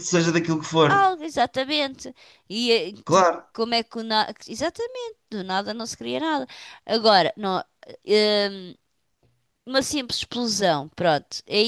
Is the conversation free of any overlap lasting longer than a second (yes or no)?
yes